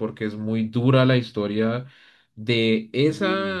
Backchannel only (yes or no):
yes